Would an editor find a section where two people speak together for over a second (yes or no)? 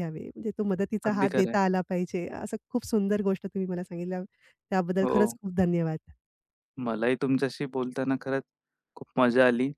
no